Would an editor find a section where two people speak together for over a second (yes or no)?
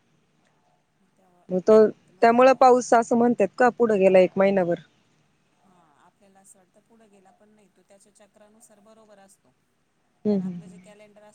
no